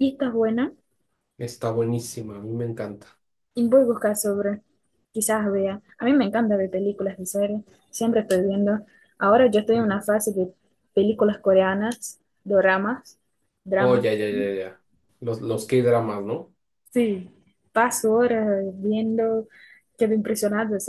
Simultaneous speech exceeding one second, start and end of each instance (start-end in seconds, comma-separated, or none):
none